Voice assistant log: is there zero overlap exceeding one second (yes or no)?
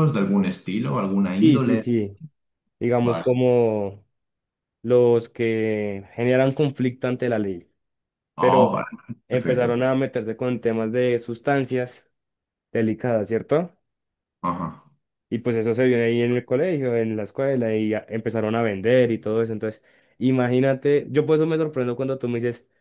yes